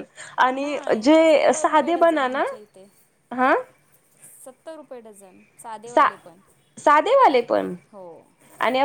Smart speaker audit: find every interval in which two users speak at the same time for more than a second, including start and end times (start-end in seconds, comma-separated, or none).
0.6-2.4